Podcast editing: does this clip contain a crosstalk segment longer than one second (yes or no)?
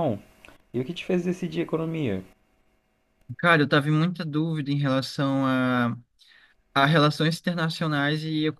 no